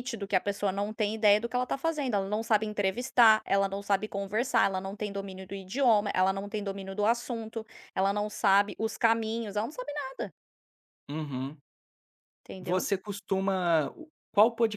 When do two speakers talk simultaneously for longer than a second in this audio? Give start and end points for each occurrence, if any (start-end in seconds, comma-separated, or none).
none